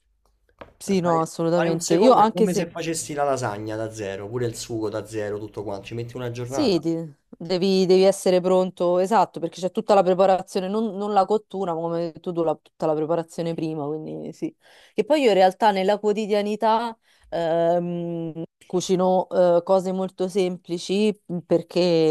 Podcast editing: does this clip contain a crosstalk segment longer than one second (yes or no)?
yes